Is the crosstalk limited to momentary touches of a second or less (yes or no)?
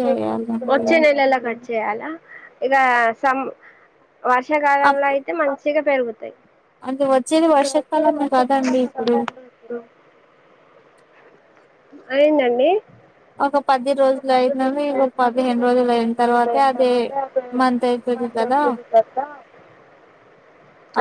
no